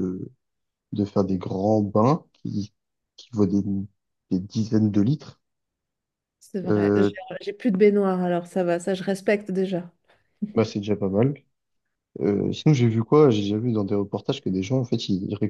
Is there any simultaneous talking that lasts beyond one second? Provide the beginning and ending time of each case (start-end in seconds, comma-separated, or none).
none